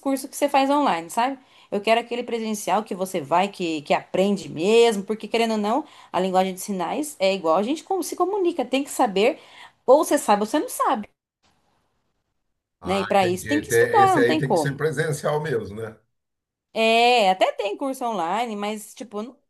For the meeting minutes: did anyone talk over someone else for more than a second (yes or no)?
yes